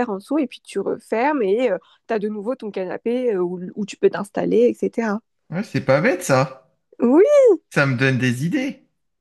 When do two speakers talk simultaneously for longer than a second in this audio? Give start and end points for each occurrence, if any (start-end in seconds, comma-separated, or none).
none